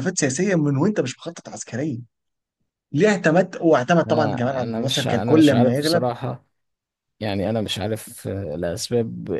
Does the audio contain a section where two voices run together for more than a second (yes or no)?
yes